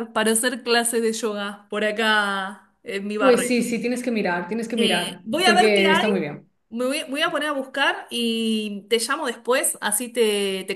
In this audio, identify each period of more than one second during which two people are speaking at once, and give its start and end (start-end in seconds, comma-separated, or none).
4.8-6.1